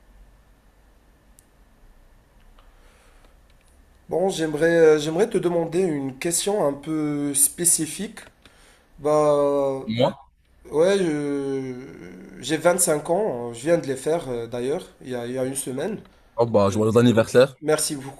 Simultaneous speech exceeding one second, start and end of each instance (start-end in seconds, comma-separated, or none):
none